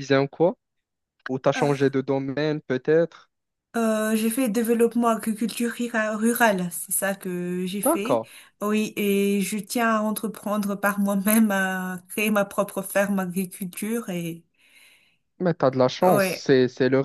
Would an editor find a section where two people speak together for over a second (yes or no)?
no